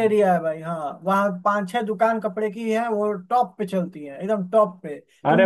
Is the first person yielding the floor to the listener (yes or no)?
yes